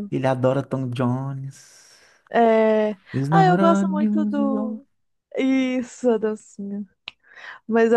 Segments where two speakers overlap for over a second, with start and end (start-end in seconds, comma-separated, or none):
3.3-4.8